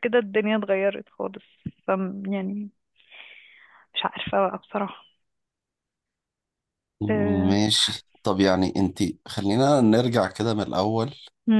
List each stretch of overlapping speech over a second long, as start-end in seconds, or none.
none